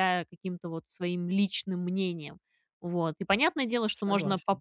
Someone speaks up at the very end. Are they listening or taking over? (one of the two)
listening